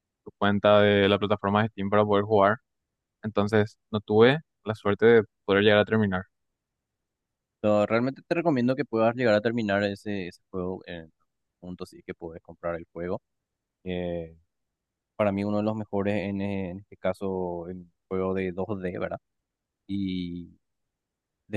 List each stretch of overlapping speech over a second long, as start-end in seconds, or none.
none